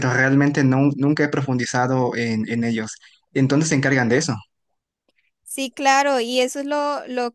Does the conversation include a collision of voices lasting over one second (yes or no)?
no